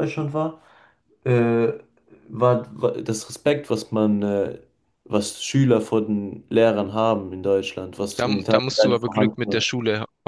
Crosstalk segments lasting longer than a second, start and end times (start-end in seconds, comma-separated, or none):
8.2-9.7